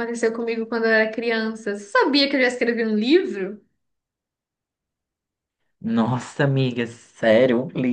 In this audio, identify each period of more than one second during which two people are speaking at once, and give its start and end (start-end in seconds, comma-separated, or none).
none